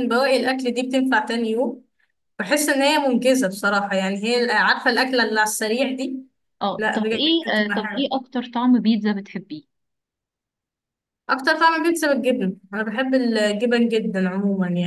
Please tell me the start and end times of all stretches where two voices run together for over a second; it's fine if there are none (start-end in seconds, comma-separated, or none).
6.8-8.1